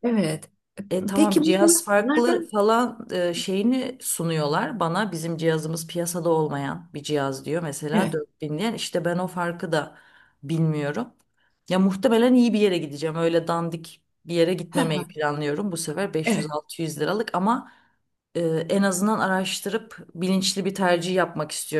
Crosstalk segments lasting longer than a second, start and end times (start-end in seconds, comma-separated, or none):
1.1-2.5